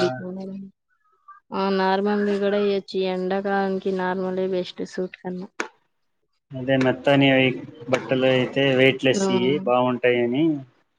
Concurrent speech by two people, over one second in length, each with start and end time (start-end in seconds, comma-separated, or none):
none